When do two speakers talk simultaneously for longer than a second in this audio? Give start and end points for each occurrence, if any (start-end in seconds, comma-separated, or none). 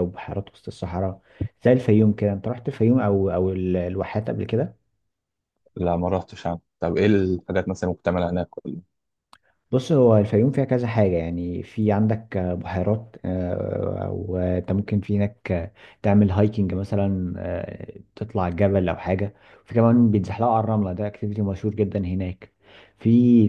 none